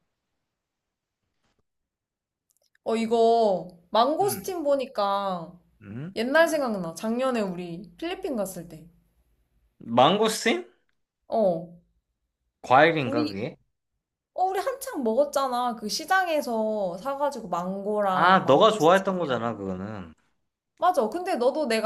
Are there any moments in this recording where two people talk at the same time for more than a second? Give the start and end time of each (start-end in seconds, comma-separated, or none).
18.0-19.4